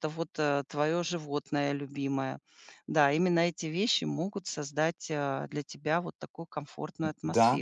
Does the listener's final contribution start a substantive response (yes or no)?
yes